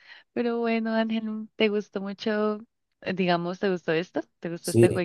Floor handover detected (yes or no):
yes